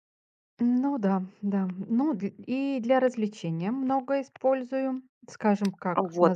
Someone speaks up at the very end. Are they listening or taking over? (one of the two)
taking over